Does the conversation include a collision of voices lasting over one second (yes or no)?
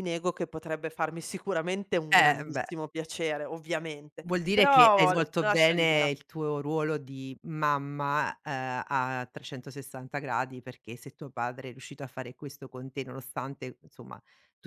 yes